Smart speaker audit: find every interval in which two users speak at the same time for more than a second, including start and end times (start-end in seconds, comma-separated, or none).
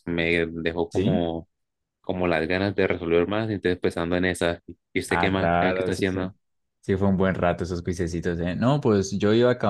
5.1-6.3